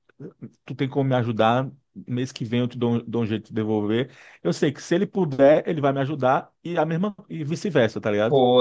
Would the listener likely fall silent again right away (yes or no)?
no